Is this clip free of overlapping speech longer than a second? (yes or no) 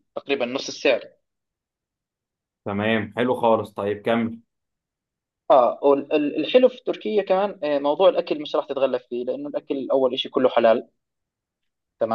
yes